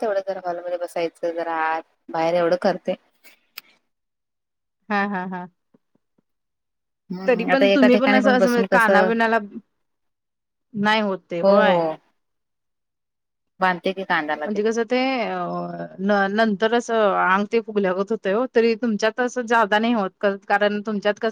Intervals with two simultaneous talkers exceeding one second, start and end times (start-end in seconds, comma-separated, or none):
7.3-9.1